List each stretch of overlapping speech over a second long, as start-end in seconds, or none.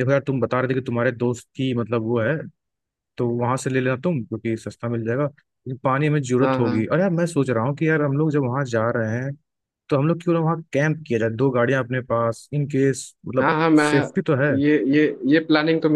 none